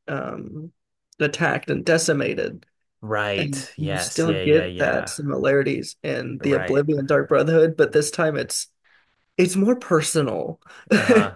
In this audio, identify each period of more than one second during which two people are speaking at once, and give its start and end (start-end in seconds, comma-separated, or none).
3.4-5.1